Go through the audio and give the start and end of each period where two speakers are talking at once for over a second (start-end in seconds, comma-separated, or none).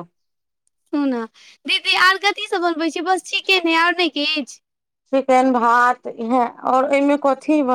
none